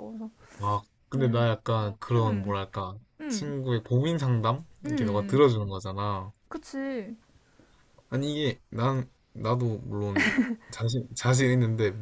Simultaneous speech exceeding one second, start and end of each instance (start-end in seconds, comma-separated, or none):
none